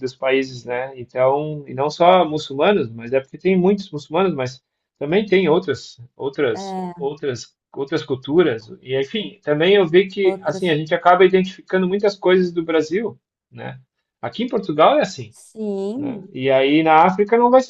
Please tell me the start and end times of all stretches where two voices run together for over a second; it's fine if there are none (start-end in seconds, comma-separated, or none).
none